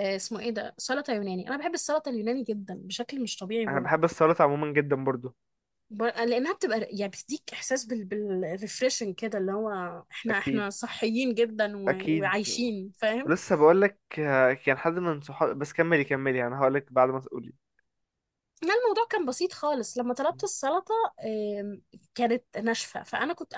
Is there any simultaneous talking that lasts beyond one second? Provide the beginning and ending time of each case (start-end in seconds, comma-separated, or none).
none